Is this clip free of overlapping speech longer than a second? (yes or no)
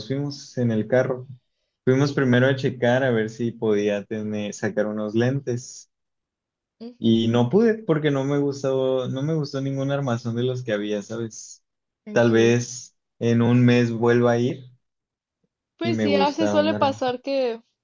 no